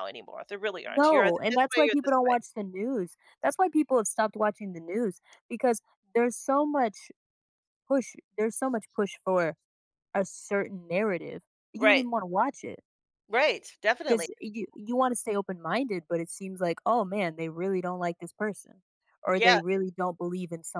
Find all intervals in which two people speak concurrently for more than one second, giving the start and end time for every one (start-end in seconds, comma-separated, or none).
0.9-2.4